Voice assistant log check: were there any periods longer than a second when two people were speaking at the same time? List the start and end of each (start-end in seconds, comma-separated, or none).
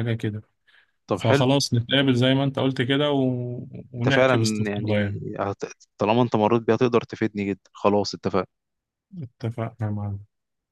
4.0-5.2